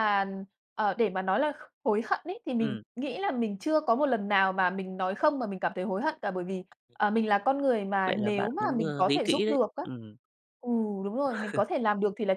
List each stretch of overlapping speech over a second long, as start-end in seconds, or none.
8.0-9.8